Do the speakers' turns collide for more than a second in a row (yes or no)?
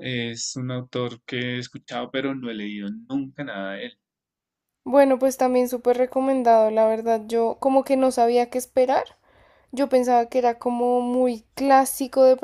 no